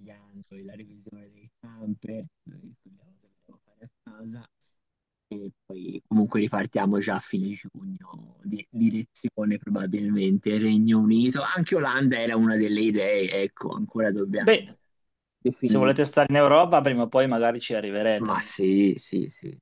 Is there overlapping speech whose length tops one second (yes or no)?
no